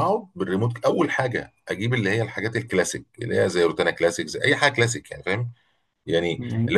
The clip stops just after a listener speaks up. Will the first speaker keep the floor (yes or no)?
yes